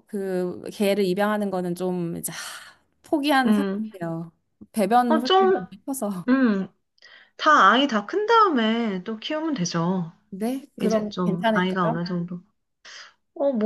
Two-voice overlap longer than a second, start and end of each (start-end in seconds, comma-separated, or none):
10.8-12.0